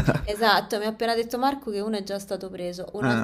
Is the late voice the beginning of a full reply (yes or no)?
no